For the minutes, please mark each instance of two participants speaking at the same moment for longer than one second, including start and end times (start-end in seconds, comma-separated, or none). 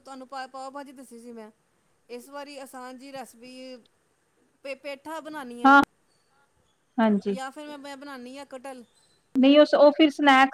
none